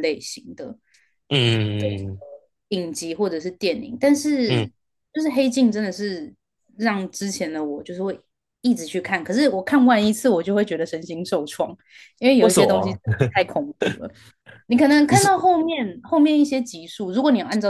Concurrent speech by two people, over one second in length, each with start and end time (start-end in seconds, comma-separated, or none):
none